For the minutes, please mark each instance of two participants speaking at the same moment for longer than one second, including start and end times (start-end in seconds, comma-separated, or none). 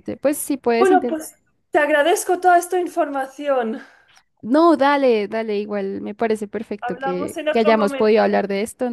6.8-8.3